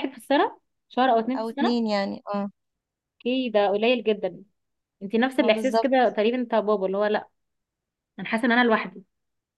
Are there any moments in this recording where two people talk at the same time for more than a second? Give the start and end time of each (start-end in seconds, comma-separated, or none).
none